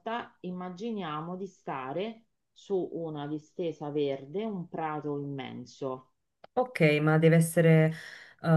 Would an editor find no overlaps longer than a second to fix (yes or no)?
yes